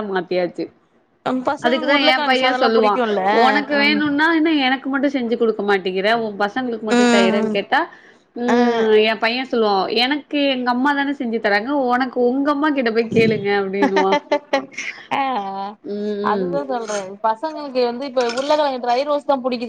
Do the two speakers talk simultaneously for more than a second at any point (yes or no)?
yes